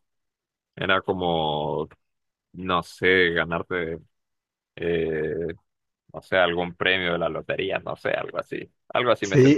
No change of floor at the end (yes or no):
no